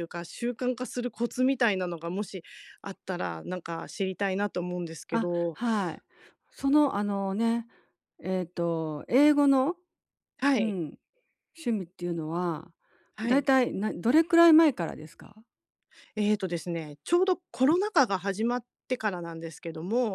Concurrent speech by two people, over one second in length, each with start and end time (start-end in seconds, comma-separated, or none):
none